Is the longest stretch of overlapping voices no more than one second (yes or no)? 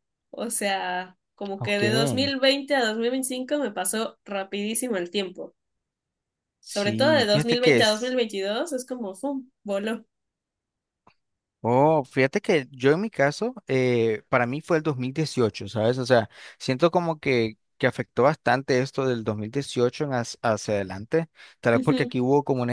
no